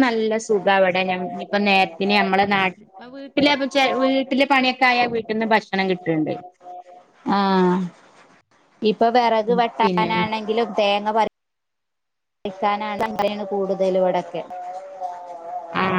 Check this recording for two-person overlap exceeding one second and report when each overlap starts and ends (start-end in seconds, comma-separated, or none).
none